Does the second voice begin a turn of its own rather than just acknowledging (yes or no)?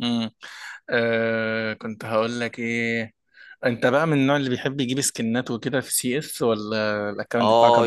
yes